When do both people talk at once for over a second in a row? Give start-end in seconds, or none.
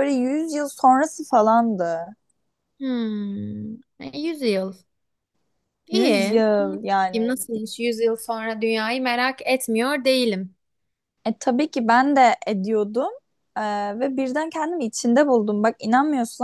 5.9-7.4